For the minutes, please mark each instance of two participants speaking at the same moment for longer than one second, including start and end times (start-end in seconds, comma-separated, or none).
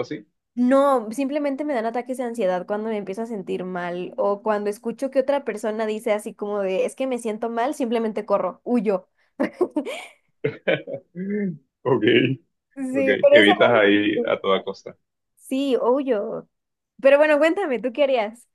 12.9-14.4